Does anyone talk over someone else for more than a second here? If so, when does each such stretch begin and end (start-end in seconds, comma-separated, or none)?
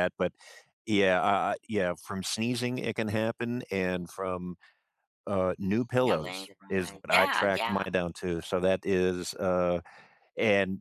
6.0-7.9